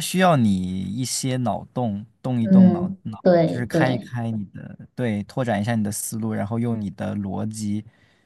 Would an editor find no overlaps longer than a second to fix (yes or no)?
no